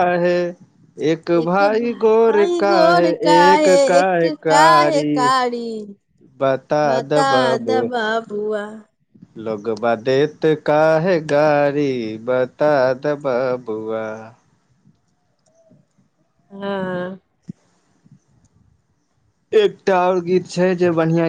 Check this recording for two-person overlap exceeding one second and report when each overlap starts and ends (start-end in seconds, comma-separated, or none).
1.9-5.1